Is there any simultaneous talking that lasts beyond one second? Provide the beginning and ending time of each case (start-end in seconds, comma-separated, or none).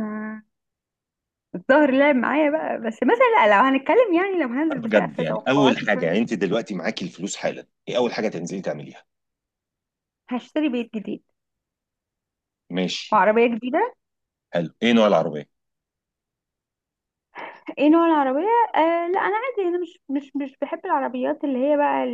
4.8-6.2